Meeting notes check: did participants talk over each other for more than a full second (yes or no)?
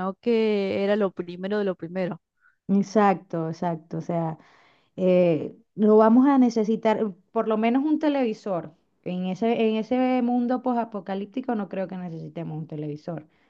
no